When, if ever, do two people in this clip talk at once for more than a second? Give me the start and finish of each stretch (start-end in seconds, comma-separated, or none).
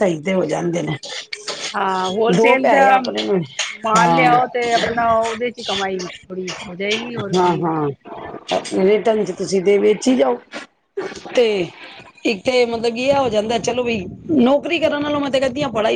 none